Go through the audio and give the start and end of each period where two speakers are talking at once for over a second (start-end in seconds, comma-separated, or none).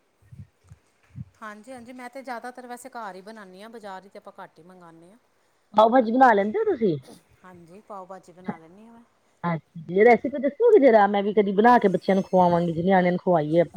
none